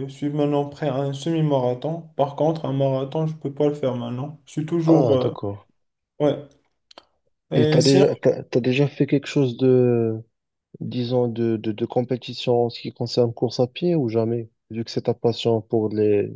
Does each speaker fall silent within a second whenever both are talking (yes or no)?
yes